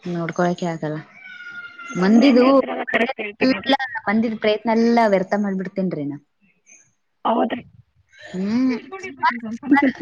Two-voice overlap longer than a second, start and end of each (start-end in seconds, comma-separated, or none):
2.0-3.7